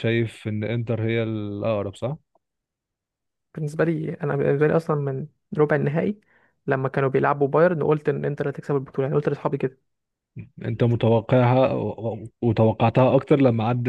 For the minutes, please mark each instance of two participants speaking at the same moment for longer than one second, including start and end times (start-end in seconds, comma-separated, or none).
none